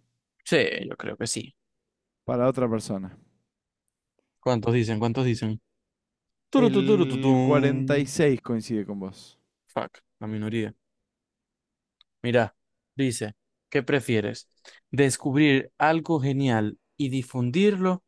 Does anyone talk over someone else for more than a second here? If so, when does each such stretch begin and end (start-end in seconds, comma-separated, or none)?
6.5-8.2